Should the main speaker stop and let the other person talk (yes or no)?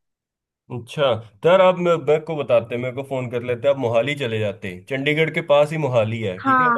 no